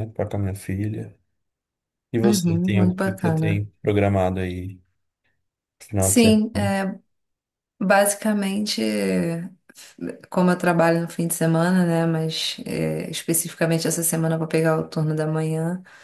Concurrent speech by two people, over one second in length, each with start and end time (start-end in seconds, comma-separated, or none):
2.2-3.6